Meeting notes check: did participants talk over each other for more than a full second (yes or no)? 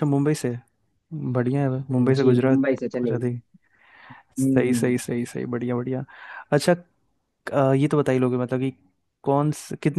yes